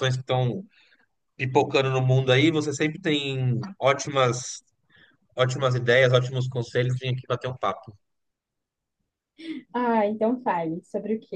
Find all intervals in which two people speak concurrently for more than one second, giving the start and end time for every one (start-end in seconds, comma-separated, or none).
none